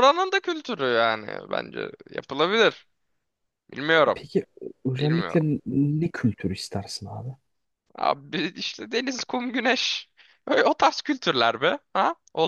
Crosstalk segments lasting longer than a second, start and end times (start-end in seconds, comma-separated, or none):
none